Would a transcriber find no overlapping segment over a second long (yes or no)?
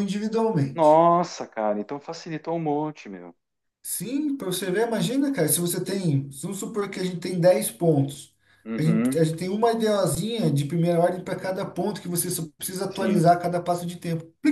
yes